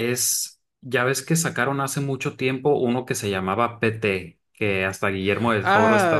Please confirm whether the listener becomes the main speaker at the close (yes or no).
yes